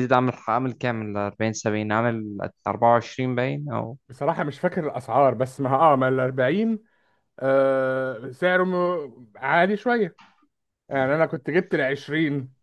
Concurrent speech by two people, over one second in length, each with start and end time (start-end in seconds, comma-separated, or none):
none